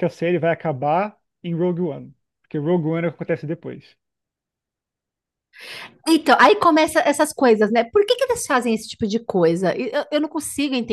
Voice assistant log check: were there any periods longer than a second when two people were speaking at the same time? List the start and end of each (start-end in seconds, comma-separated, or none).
none